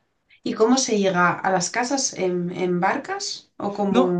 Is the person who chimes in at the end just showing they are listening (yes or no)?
no